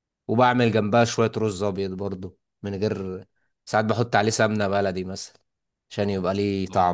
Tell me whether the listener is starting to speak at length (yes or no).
yes